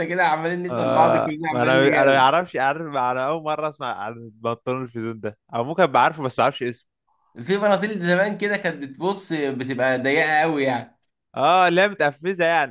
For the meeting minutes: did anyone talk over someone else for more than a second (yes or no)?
yes